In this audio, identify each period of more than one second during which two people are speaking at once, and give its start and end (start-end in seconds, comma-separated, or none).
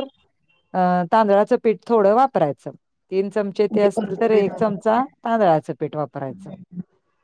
3.7-5.0